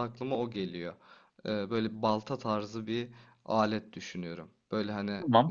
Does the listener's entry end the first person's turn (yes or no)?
no